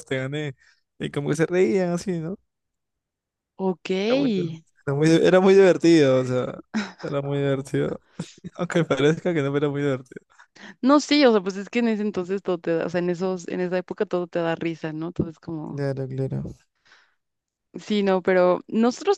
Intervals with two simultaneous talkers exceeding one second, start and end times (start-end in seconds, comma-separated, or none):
none